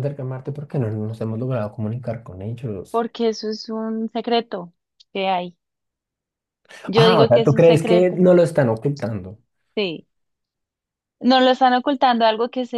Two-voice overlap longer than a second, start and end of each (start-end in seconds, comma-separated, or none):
6.9-8.2